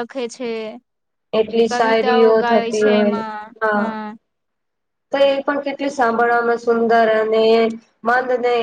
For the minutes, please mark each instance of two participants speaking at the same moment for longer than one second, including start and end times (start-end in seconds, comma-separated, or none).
1.7-3.2